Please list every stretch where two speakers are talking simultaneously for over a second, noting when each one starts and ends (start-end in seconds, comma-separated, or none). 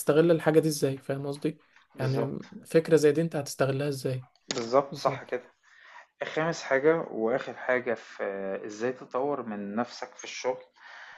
none